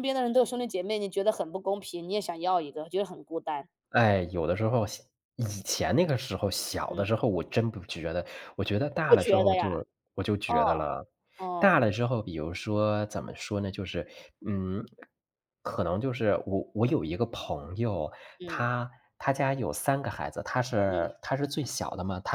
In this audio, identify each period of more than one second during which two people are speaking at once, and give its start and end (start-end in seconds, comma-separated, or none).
none